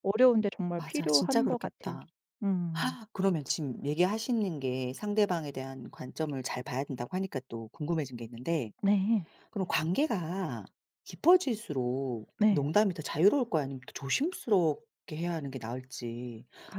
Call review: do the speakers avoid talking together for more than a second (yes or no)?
no